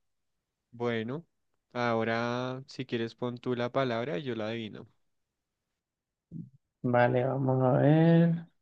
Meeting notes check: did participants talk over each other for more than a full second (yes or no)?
no